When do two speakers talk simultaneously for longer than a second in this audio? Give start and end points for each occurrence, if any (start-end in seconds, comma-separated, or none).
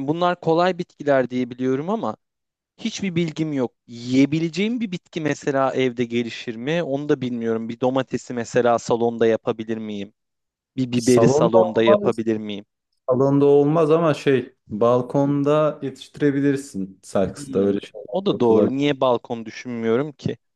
10.9-12.2, 17.2-18.8